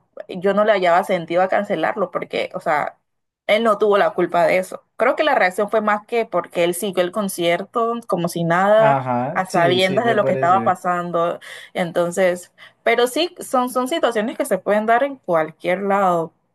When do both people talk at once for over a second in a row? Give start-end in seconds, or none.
8.8-10.6